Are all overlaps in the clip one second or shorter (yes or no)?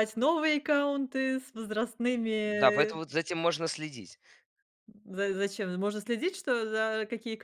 yes